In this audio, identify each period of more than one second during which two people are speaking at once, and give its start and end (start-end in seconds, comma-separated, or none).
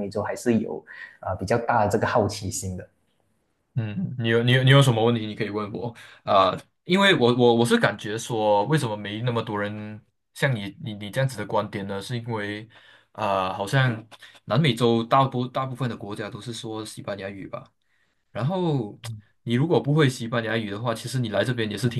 none